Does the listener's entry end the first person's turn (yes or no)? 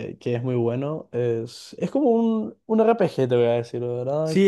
yes